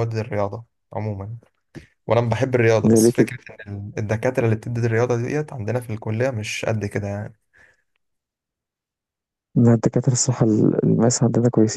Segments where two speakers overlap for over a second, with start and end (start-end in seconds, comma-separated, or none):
none